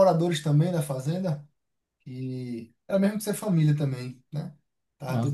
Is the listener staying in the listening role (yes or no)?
no